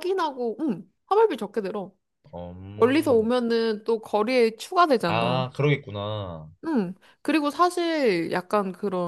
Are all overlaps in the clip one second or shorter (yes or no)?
yes